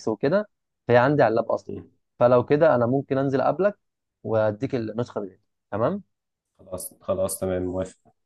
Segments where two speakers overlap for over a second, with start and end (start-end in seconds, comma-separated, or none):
none